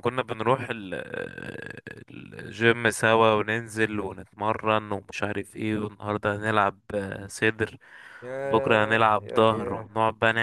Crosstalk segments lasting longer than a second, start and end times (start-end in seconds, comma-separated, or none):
8.4-9.9